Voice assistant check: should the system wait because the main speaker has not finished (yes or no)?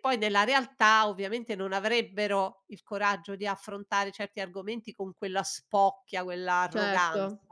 no